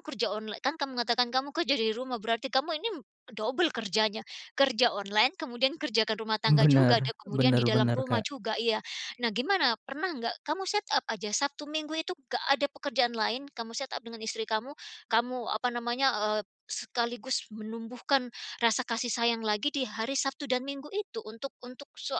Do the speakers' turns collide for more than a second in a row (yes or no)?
yes